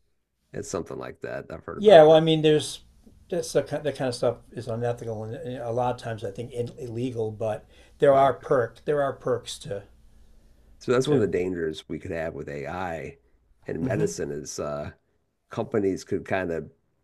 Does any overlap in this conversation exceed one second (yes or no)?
no